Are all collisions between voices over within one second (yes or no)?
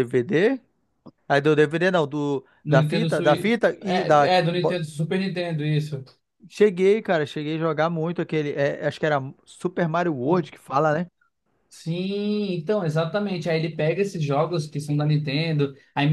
no